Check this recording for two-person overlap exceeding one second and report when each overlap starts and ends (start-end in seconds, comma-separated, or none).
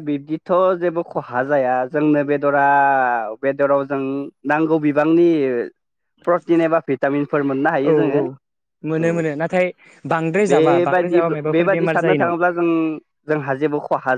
10.5-12.3